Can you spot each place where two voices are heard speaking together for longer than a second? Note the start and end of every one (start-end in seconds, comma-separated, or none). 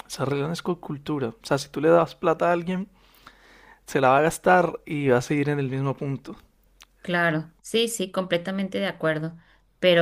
none